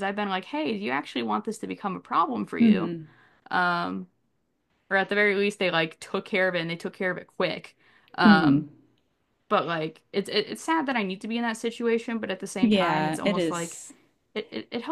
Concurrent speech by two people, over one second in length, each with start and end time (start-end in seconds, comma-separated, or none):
12.6-13.8